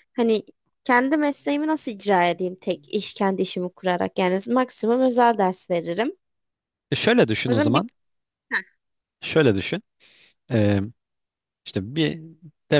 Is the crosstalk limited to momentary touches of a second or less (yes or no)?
yes